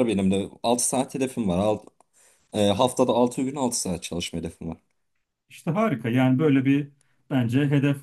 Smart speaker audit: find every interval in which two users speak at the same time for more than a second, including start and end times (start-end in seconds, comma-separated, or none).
none